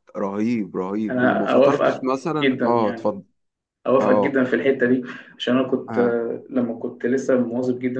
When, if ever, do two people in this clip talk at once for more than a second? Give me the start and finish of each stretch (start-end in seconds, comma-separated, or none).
1.1-3.1